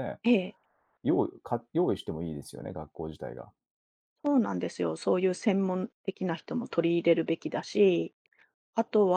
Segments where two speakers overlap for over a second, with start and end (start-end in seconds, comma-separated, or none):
none